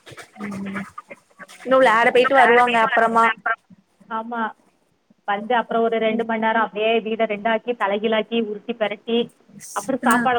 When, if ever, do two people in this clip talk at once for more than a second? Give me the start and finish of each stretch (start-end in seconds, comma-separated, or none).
1.6-3.2